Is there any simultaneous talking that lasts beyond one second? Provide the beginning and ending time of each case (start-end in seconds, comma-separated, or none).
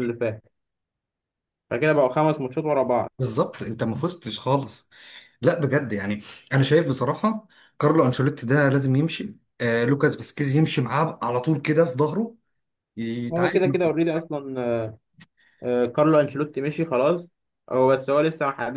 none